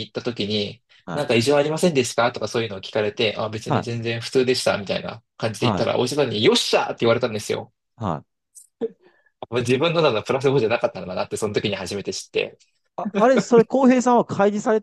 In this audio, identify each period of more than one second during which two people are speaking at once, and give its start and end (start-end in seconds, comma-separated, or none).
none